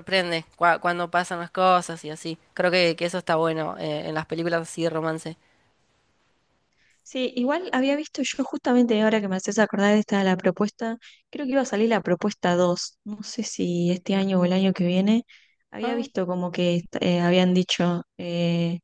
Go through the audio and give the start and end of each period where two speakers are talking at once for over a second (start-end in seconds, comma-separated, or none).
none